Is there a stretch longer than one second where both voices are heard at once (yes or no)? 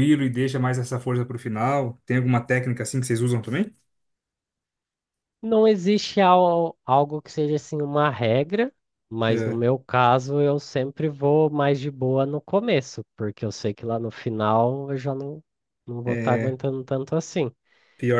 no